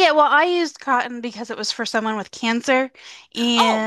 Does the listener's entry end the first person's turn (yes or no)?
no